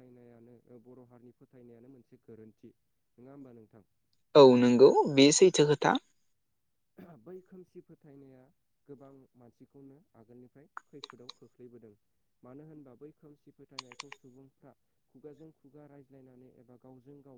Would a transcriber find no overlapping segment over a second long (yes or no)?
yes